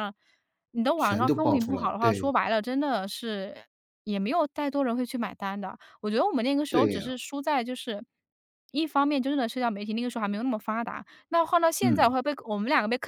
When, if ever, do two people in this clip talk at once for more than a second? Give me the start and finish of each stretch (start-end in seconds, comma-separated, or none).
1.0-2.3